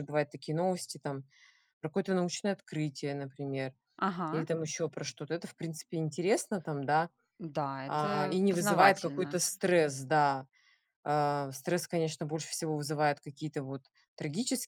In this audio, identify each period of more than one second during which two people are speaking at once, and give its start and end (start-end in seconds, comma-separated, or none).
7.9-9.4